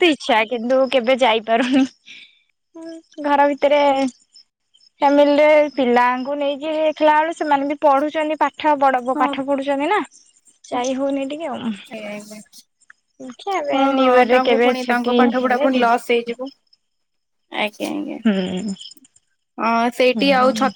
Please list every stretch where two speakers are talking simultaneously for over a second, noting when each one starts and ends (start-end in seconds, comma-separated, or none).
none